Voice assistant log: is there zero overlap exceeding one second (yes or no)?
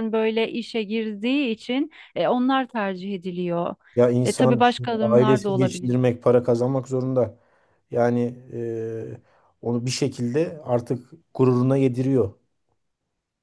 no